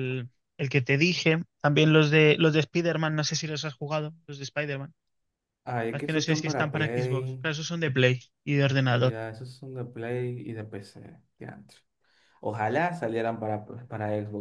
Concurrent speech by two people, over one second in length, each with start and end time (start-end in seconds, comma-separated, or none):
5.9-7.4